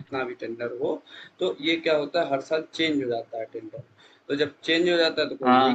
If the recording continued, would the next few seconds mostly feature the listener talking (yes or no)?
no